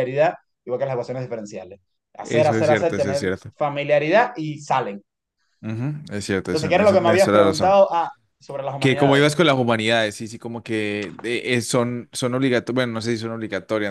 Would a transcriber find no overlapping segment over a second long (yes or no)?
no